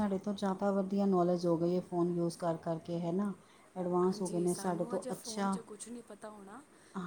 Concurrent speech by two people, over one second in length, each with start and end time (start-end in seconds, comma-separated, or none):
4.0-5.6